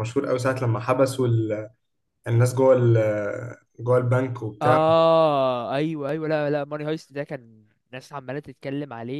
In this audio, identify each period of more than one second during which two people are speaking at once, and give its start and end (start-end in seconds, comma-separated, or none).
none